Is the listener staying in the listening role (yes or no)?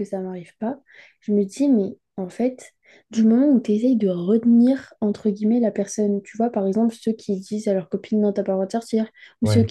yes